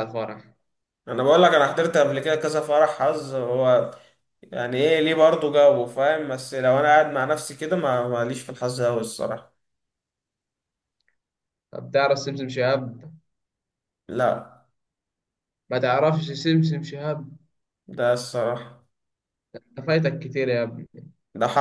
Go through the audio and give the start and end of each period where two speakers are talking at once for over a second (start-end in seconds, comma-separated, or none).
none